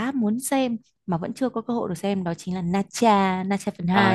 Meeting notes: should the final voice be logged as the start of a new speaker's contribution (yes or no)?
yes